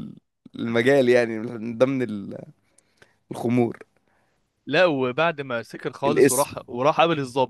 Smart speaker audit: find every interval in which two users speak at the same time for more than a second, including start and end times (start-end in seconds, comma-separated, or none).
none